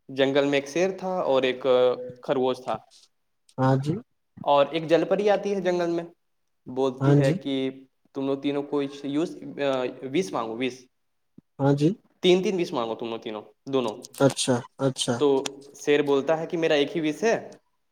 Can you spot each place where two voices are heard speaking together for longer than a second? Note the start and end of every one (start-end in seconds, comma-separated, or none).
none